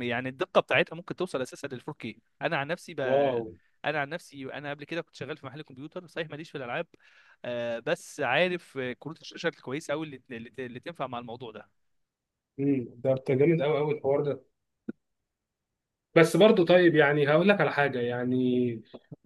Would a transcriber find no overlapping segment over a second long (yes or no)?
yes